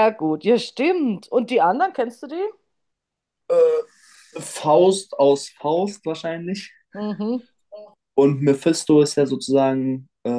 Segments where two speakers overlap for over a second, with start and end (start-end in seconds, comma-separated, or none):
none